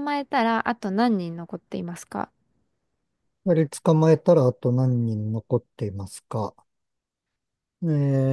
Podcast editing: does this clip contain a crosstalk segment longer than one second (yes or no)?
no